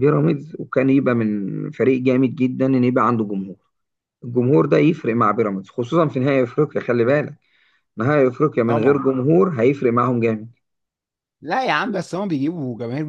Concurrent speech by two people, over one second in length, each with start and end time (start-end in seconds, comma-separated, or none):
none